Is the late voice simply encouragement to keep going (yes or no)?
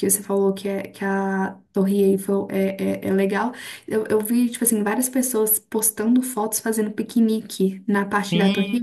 no